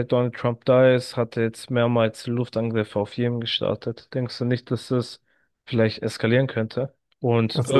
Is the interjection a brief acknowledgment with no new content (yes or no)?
yes